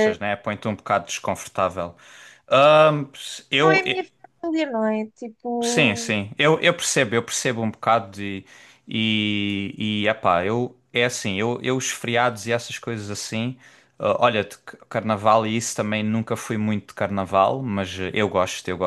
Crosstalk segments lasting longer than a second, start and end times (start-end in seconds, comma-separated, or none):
none